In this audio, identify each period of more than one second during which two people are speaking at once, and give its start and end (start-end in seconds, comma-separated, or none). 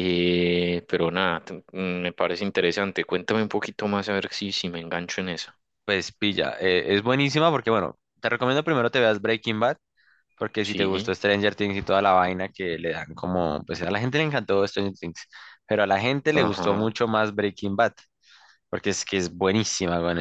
none